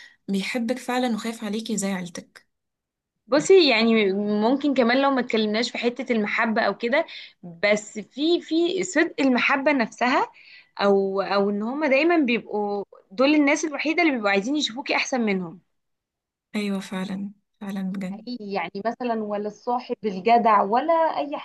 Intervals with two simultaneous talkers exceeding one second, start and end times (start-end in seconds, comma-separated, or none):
none